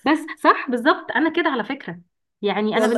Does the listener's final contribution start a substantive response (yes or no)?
no